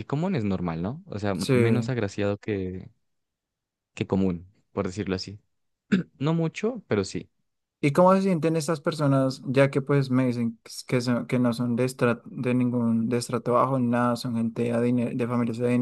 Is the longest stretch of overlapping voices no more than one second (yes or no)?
yes